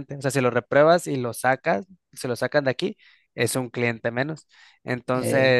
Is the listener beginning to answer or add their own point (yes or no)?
no